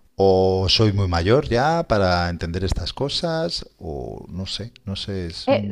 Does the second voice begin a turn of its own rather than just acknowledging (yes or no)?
yes